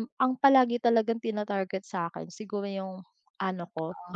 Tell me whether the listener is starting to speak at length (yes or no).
no